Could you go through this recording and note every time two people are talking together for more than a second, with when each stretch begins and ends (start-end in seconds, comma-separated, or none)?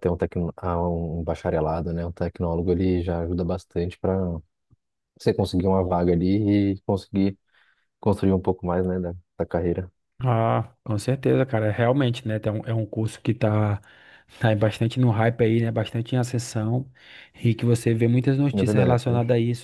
none